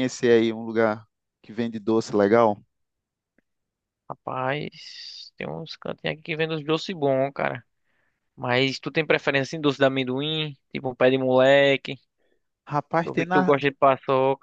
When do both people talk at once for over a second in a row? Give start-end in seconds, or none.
none